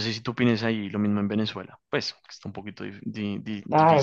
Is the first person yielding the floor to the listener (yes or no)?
yes